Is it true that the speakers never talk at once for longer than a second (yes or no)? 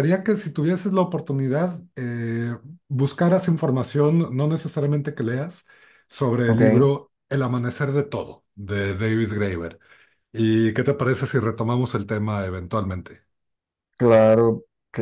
yes